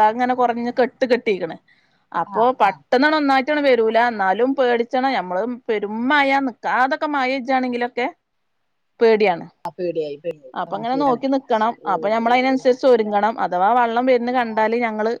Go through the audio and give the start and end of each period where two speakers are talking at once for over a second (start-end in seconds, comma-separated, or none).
none